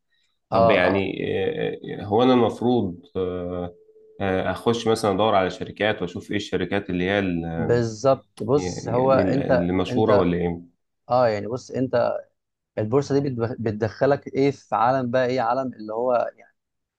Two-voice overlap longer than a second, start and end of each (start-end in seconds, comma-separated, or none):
8.5-10.3